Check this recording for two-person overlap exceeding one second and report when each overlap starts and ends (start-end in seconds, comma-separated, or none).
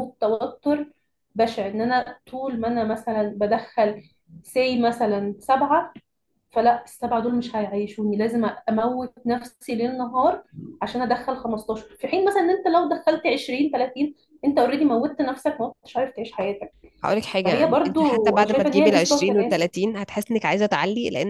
17.4-19.7